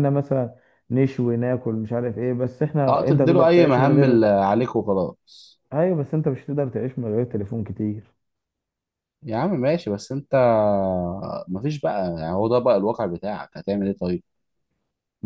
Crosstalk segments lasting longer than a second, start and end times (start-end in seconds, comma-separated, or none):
2.9-4.2